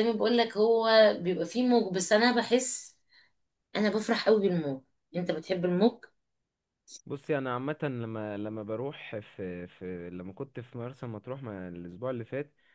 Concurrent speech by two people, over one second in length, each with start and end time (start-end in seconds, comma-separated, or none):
none